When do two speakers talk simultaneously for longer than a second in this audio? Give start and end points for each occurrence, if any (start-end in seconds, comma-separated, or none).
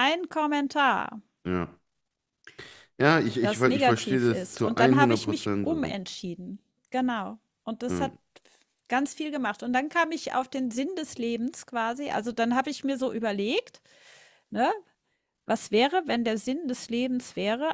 3.4-5.7